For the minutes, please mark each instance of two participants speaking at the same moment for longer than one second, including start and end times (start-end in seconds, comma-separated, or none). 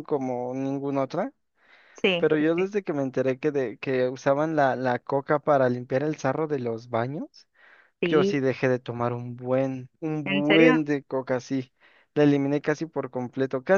none